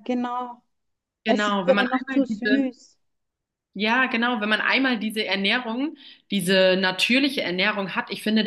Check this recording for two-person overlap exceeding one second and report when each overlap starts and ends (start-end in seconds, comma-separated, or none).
1.3-2.7